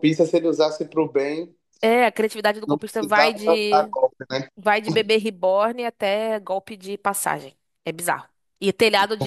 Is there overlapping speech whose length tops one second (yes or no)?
yes